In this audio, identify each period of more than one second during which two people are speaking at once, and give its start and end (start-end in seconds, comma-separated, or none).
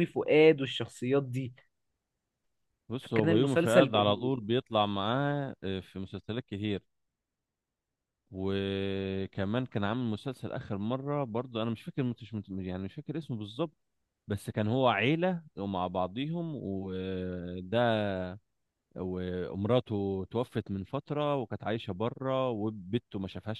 3.0-4.3